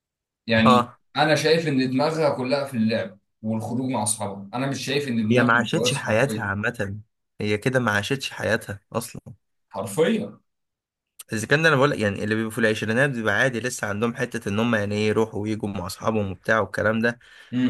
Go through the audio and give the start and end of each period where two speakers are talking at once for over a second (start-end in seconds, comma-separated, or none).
5.3-6.5